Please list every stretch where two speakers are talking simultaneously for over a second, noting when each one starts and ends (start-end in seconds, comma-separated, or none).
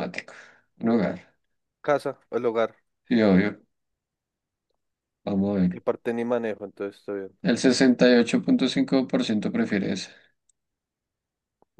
none